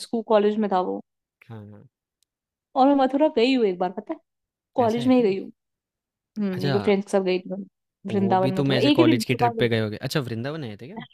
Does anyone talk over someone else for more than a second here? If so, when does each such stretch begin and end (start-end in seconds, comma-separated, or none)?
8.1-9.8